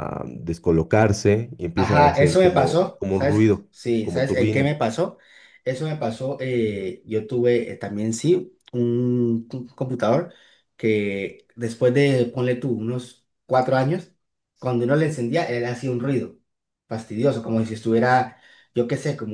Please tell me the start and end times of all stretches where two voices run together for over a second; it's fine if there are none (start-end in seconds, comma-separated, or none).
1.7-4.7